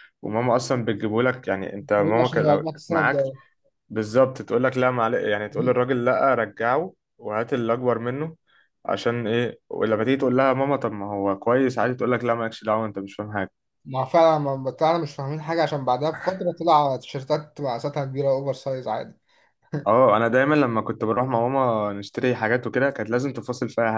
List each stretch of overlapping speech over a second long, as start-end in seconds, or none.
2.0-3.2